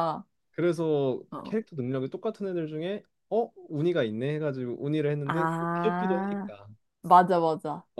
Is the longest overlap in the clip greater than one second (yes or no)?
yes